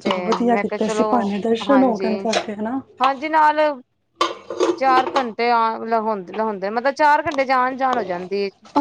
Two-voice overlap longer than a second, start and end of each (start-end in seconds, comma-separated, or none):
none